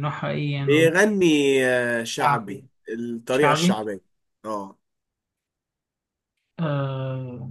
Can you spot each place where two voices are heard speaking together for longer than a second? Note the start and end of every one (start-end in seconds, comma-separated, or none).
none